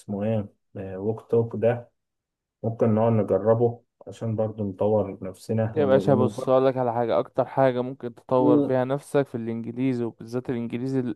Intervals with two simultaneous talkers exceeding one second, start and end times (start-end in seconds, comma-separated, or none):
none